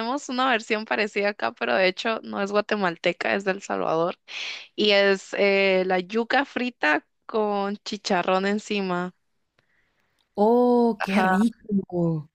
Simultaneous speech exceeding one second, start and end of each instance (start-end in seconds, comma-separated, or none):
none